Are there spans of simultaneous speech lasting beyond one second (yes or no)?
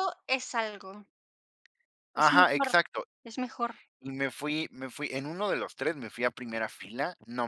no